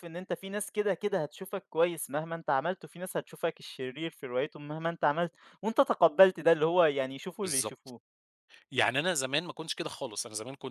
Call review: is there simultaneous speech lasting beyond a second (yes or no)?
no